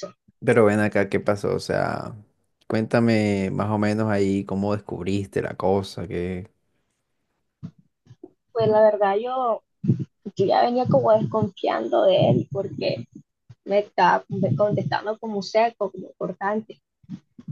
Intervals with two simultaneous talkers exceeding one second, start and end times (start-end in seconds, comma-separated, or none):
none